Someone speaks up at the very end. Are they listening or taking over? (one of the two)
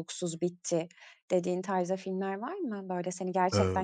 listening